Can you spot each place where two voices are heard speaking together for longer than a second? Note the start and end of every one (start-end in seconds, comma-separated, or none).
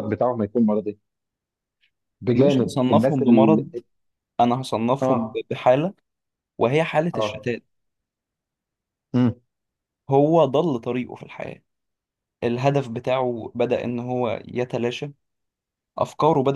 2.4-3.6